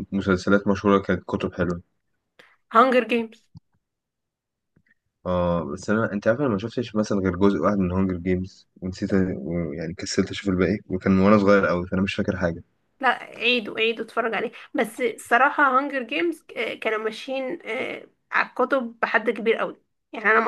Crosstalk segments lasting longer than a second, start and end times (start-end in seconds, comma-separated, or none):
none